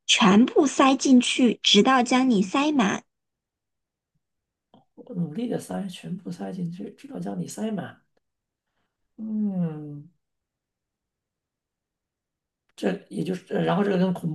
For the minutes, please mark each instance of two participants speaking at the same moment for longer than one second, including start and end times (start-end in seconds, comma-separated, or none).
none